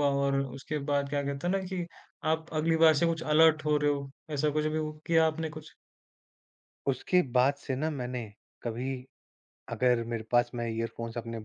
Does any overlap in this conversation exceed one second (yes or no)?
no